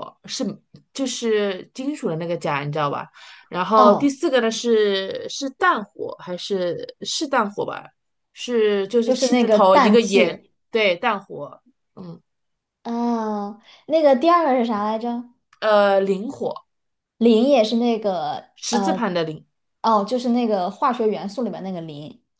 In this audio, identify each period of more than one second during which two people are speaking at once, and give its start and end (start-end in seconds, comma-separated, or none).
9.0-10.5